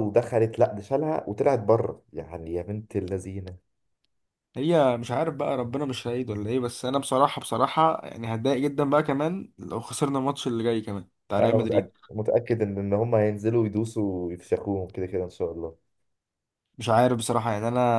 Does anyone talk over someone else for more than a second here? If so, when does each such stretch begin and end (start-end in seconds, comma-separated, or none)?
none